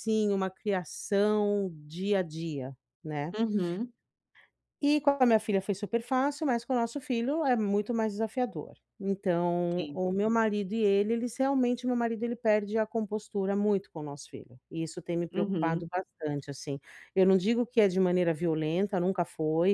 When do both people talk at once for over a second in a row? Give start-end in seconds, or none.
none